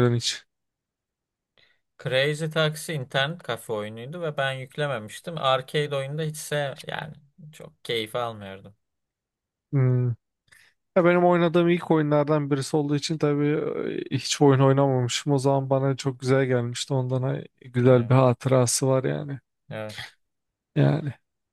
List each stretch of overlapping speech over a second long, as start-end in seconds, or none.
none